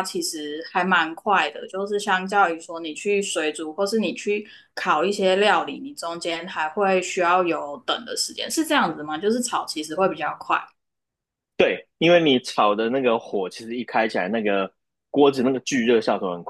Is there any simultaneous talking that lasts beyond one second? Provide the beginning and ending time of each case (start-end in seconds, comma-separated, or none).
none